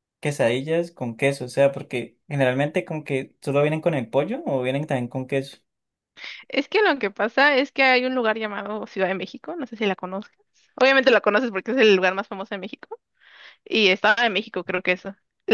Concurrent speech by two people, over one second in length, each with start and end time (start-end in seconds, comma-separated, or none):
none